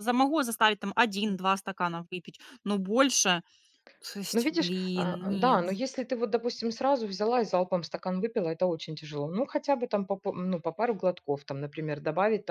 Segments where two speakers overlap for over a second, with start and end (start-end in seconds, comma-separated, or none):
4.3-5.6